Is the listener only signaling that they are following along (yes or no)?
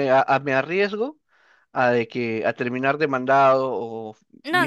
no